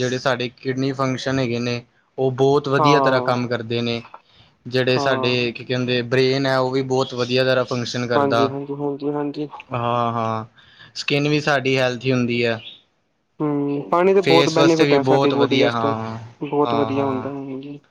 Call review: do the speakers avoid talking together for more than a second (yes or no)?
no